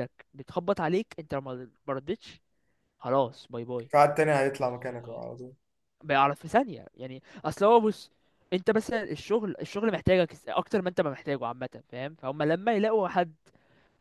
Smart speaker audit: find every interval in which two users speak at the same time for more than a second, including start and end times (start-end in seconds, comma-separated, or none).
none